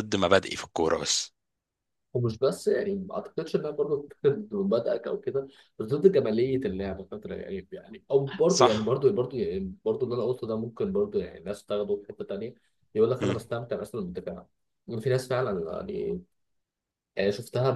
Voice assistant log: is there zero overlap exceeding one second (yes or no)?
yes